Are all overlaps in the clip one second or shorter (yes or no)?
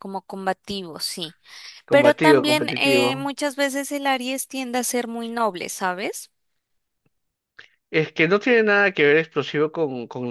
no